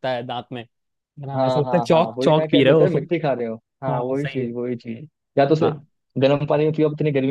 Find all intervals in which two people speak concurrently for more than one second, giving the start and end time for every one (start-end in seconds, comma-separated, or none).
1.4-3.1